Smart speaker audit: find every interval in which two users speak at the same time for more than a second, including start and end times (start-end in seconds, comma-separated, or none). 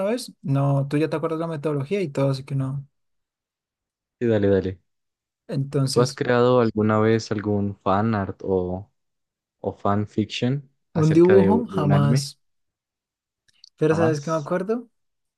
10.9-12.3